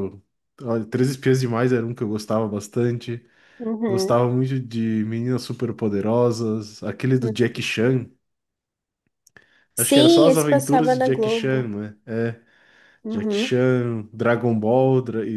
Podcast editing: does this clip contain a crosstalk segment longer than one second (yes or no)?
yes